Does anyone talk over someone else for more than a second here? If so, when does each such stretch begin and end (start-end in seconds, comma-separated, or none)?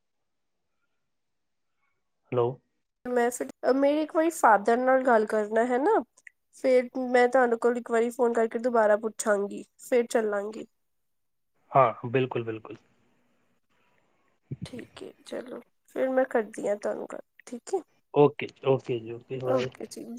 none